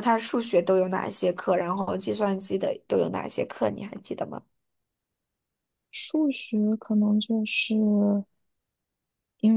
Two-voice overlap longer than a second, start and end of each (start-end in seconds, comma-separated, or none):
none